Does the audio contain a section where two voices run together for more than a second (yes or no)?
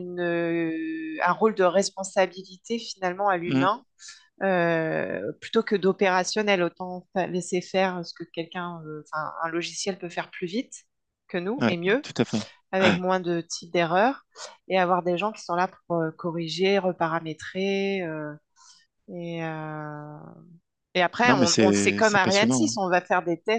yes